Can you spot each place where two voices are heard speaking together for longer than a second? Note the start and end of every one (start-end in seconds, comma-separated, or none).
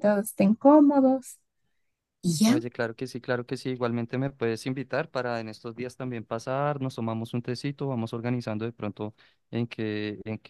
none